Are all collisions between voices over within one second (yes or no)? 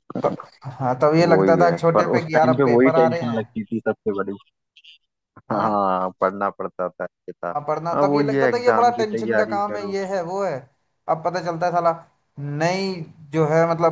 no